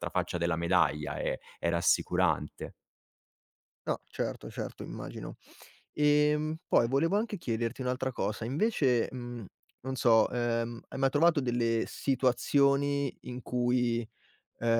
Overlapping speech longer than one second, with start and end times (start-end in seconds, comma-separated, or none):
none